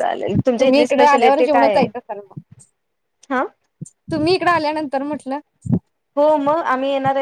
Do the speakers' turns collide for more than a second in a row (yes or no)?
yes